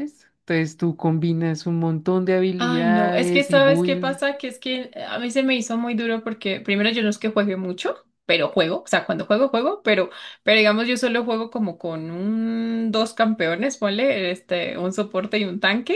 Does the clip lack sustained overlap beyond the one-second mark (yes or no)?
no